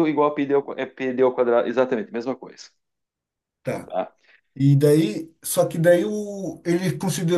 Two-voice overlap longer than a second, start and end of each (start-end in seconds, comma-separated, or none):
none